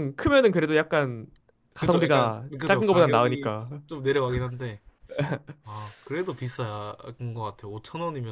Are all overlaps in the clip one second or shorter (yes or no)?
no